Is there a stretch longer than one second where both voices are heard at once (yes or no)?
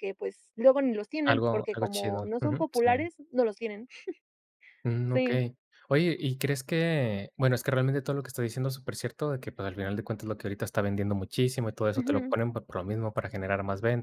yes